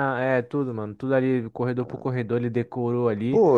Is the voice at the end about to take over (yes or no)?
yes